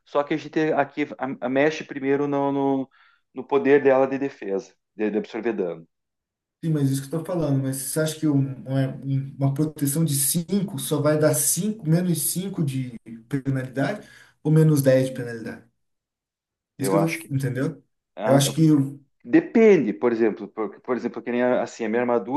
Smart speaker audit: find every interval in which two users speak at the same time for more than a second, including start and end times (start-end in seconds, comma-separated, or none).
none